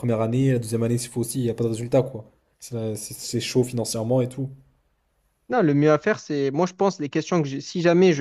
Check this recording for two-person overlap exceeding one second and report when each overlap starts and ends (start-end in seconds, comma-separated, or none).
none